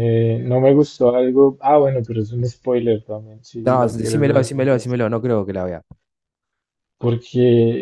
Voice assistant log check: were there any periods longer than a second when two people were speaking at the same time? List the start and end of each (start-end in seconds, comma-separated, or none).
3.6-4.8